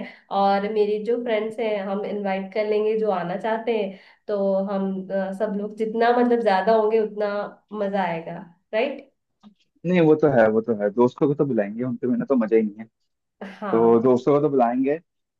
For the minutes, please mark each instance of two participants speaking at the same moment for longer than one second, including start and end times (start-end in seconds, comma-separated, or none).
none